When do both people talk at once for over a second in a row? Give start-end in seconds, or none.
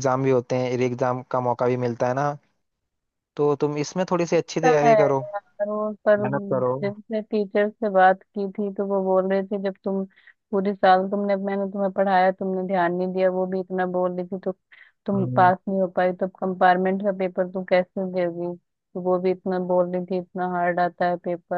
none